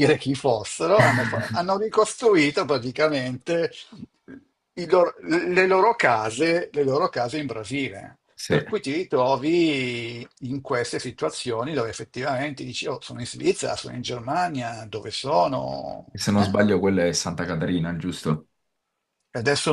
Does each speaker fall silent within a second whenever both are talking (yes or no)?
yes